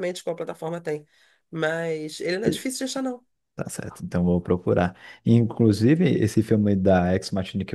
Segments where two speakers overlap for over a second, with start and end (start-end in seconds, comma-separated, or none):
none